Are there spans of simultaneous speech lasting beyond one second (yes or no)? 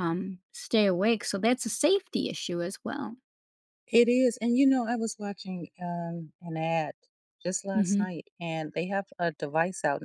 no